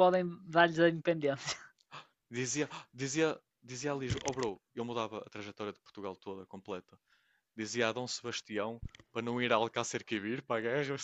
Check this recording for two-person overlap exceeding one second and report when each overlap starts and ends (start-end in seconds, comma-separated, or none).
none